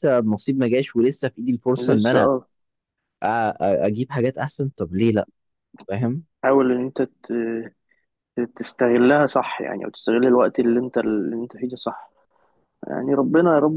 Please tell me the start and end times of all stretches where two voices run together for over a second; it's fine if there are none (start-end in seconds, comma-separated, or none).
none